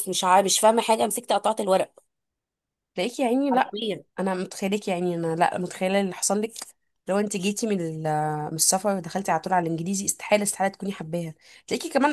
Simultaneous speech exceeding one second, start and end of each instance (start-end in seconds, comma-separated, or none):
none